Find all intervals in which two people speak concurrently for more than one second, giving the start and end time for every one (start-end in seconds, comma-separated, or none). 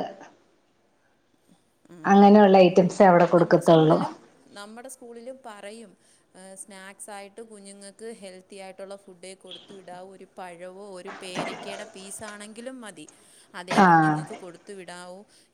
none